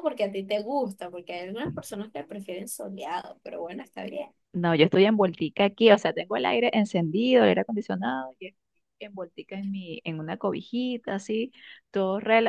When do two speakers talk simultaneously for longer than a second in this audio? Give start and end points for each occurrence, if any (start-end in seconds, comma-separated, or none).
none